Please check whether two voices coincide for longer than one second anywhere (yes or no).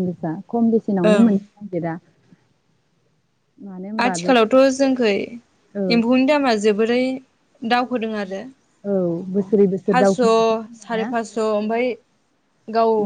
yes